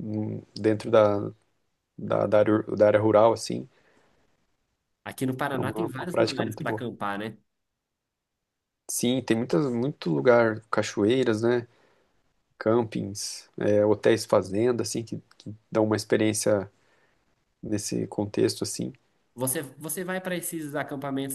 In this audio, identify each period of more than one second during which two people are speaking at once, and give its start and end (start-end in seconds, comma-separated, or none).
5.6-6.8